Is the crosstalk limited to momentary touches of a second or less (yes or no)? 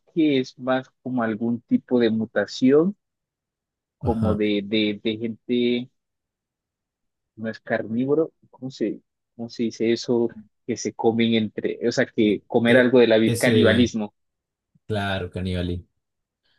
no